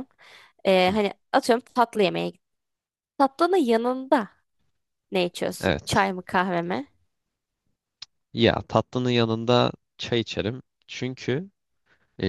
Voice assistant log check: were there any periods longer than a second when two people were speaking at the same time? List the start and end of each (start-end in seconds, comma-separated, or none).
none